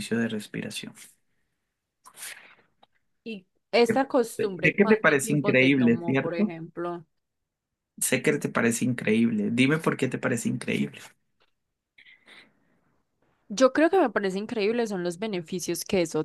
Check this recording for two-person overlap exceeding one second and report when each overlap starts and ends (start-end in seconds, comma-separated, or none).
4.6-6.5